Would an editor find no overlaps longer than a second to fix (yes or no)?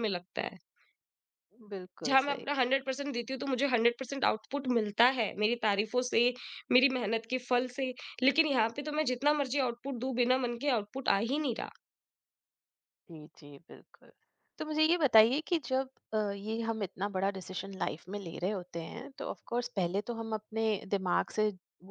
yes